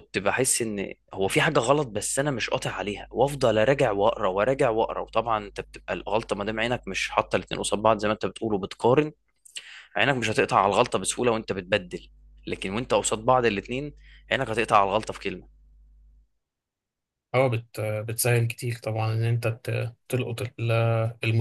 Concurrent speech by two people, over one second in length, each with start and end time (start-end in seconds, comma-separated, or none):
none